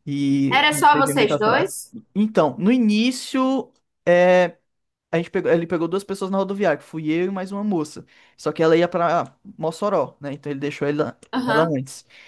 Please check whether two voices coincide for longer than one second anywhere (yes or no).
yes